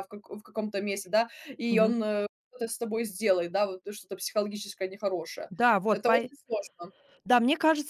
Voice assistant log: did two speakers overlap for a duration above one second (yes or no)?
no